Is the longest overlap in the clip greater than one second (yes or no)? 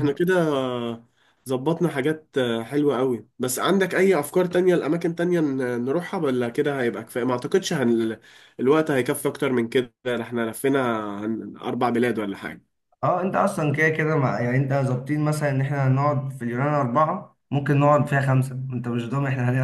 no